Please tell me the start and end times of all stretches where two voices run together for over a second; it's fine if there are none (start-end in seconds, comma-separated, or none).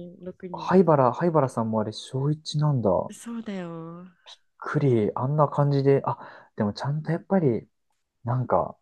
none